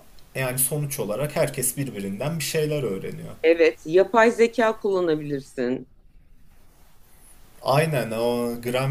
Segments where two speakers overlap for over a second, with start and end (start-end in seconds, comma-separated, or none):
none